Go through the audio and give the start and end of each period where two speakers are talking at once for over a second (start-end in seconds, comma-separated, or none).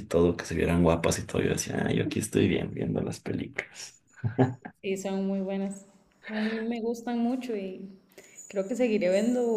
none